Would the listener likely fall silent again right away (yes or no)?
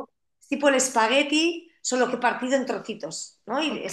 no